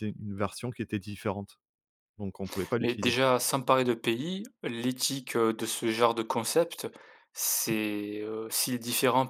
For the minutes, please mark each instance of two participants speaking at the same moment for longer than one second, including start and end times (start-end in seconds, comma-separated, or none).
none